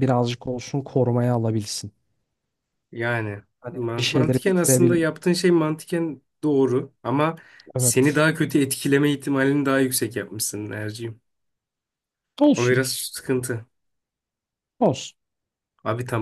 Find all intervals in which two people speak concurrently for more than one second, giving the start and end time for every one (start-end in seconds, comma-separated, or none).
3.6-5.0